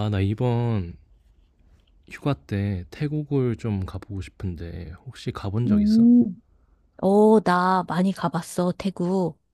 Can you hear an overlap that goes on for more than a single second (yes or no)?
no